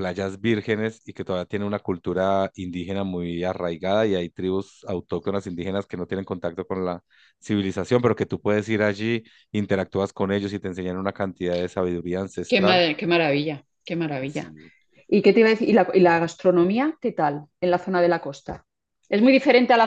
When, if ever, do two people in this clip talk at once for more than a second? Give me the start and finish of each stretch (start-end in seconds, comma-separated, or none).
none